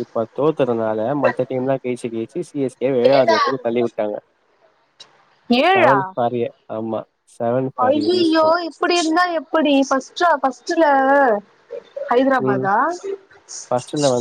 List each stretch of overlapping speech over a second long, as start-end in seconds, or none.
none